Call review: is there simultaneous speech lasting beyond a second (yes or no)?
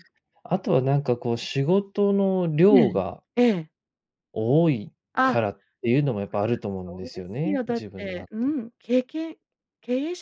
yes